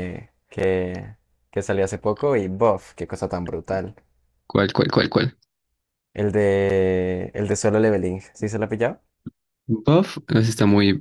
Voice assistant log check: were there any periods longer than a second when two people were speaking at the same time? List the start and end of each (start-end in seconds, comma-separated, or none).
none